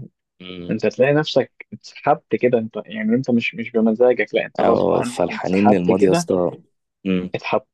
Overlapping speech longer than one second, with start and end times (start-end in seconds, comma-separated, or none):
4.6-6.3